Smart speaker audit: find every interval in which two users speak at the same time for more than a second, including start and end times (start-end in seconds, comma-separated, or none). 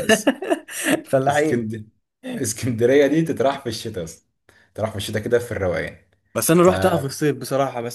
none